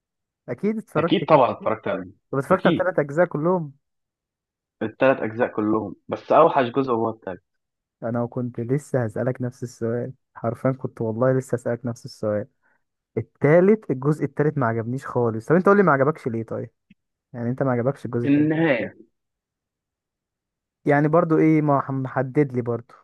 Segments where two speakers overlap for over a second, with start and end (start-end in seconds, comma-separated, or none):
none